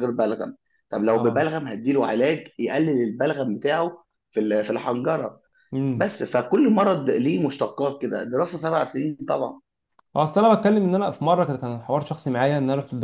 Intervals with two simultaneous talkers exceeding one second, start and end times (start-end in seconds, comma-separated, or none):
none